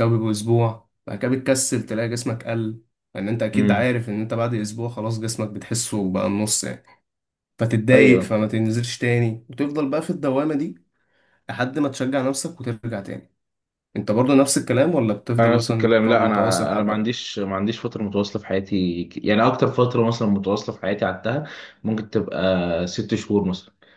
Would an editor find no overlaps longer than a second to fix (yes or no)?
no